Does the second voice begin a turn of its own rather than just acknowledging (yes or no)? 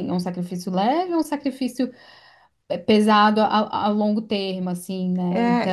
yes